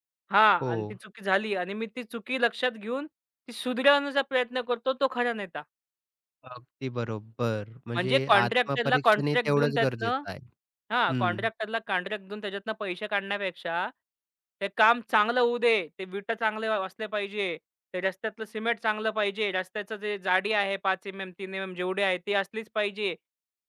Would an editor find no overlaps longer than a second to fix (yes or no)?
no